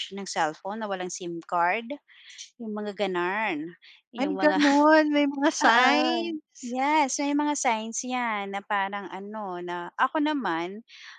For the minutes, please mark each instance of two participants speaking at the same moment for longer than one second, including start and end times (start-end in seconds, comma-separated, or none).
none